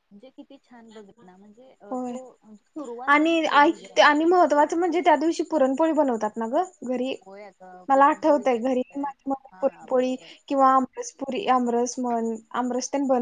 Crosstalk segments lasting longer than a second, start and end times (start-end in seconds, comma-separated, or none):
7.9-10.3